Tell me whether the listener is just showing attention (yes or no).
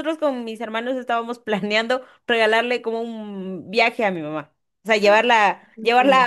yes